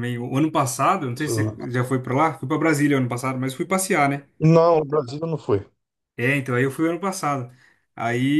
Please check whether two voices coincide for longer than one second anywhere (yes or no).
no